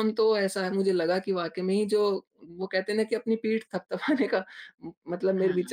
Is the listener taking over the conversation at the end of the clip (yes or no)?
no